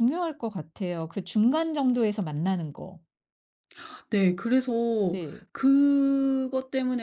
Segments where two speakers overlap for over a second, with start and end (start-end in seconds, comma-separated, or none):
none